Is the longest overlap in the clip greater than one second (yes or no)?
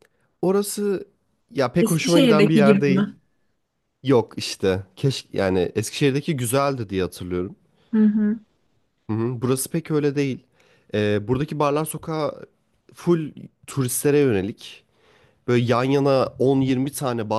yes